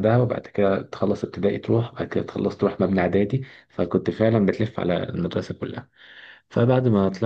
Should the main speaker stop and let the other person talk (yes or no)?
no